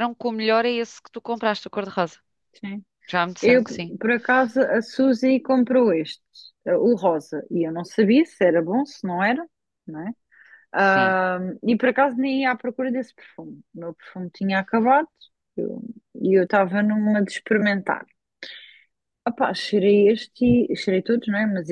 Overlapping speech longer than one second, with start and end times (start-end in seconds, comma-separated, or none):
none